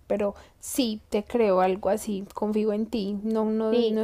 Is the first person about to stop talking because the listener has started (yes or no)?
yes